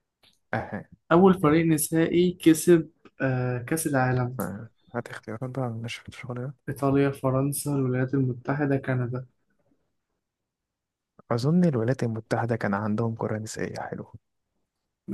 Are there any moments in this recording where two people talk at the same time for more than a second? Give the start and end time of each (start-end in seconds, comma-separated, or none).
none